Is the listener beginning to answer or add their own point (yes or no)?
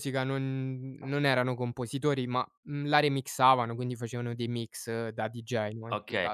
yes